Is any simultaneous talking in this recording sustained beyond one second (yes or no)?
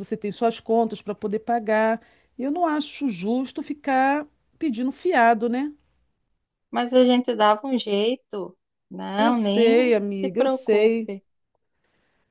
yes